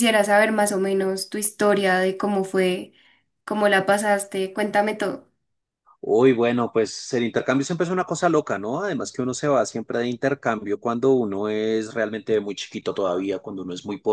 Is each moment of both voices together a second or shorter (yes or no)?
yes